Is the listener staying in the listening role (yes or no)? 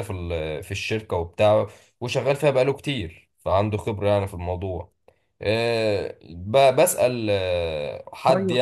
yes